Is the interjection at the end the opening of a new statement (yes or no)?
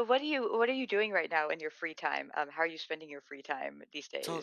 yes